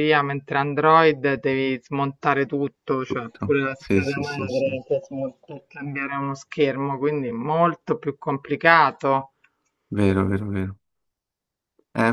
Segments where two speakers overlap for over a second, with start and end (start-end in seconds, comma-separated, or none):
3.1-4.8